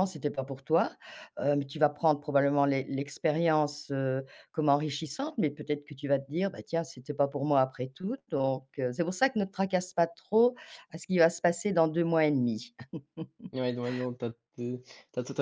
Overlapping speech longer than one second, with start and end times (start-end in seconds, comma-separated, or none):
none